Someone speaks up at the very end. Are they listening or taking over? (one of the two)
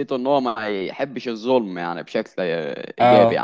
taking over